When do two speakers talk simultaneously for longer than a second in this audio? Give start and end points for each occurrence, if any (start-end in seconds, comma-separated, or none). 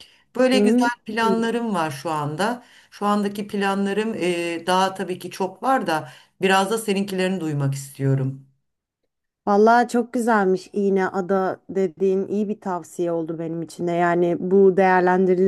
none